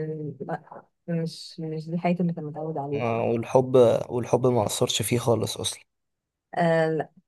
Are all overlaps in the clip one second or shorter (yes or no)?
yes